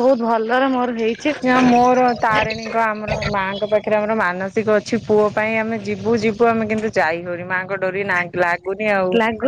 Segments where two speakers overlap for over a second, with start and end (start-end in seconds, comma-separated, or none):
none